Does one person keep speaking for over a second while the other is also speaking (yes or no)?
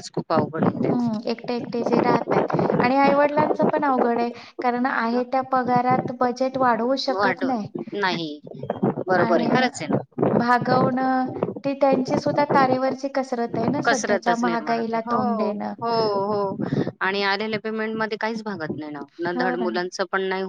yes